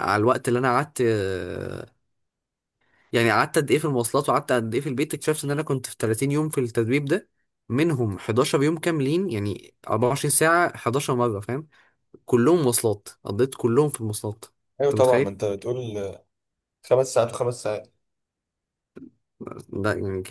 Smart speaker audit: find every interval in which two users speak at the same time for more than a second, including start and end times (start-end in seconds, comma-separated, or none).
none